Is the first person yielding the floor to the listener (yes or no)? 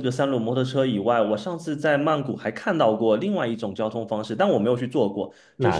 no